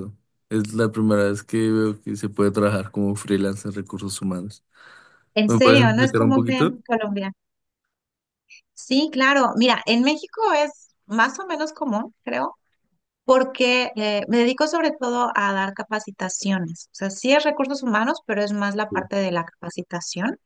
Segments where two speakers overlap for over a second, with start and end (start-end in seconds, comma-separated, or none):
5.5-6.8